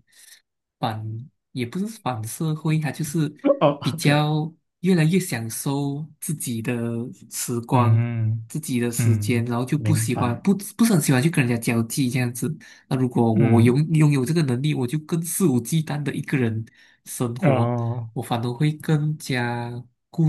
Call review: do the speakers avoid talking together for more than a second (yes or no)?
no